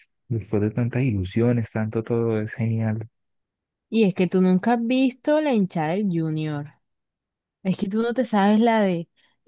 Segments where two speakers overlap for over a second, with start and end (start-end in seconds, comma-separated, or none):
none